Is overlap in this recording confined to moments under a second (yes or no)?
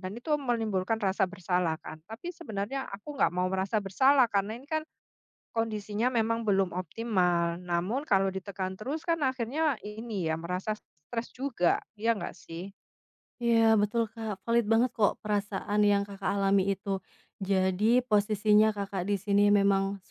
yes